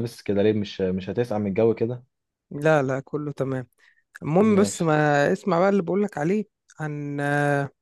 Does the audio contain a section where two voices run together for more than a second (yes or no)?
no